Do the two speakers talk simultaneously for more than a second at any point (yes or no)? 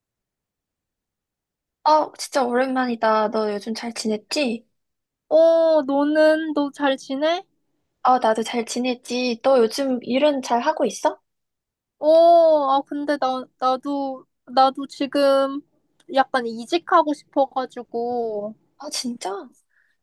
no